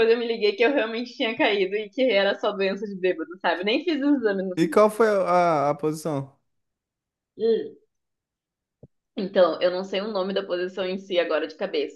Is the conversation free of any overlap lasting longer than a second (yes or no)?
yes